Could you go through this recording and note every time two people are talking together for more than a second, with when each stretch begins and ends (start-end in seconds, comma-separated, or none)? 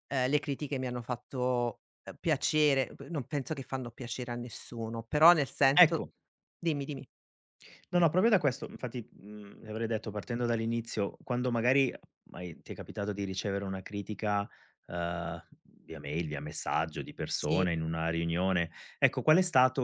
none